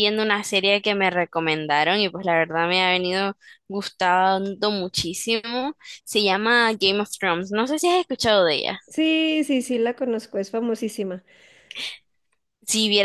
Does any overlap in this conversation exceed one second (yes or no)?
no